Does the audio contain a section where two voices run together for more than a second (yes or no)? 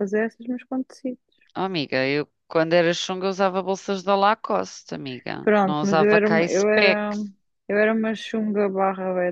yes